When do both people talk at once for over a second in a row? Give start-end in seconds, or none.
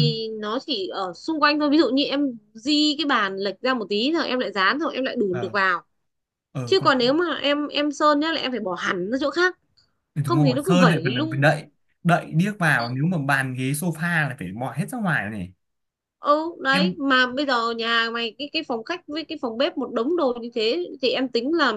10.2-11.6